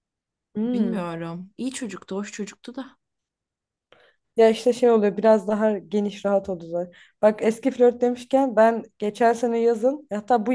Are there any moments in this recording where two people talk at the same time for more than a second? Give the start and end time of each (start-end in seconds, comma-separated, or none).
none